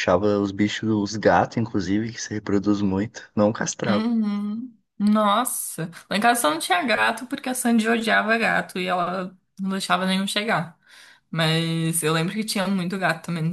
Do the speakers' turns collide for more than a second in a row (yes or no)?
no